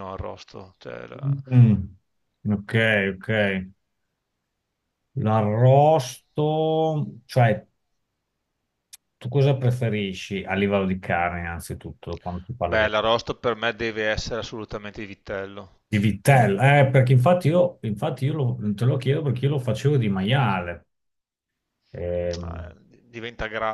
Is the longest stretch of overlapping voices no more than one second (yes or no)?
yes